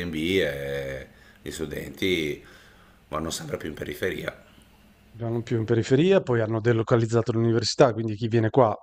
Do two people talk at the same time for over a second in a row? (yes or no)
no